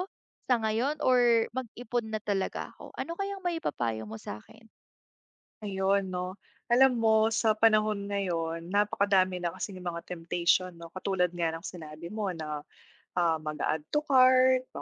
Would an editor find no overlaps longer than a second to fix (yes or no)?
yes